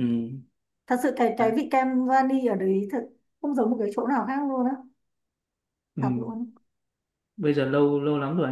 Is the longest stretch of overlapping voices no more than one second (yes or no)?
yes